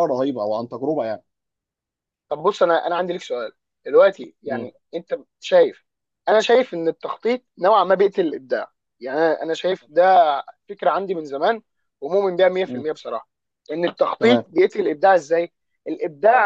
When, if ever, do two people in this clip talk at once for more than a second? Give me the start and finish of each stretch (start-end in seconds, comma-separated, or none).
none